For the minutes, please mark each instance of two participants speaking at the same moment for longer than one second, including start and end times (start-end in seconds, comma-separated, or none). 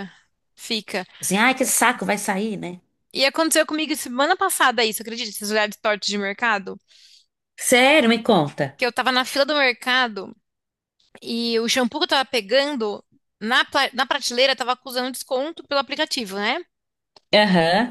none